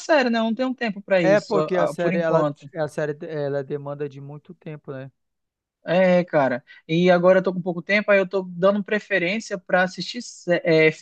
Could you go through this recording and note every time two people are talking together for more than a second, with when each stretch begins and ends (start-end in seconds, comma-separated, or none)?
1.2-2.7